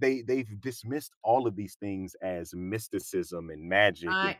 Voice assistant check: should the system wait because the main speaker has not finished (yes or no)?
yes